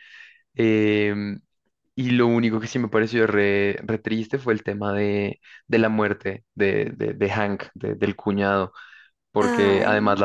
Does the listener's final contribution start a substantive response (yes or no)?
no